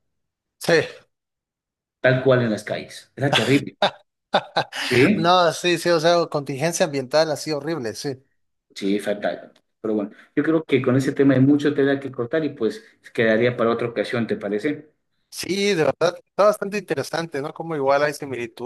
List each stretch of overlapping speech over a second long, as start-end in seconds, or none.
none